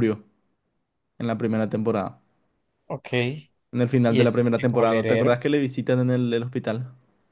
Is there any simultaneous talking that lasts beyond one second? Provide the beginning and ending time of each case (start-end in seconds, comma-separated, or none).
4.1-5.4